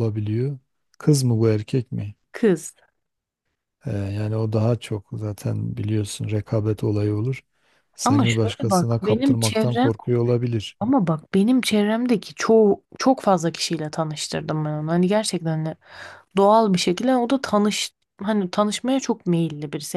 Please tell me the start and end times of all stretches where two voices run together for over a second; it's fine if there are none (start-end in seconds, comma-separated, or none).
8.1-9.9